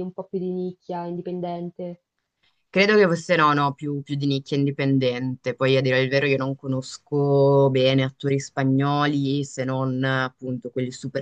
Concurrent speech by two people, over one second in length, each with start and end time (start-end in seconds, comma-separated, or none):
none